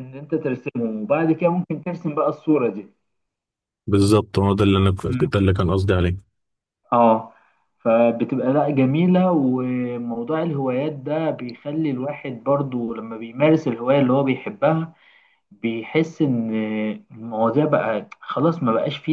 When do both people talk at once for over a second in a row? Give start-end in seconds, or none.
none